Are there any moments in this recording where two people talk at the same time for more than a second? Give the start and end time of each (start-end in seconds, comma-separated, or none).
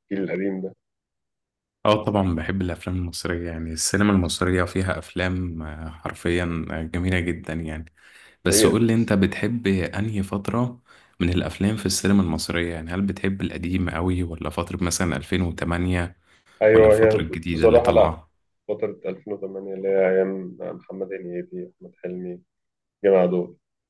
16.7-18.2